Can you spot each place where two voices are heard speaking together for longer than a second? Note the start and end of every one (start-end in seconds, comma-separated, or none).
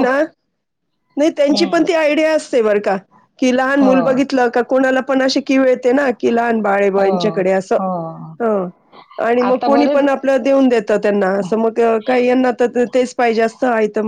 none